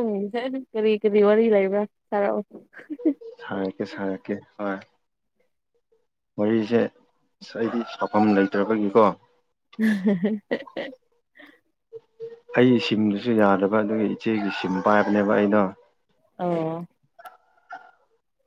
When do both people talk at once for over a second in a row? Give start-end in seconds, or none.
none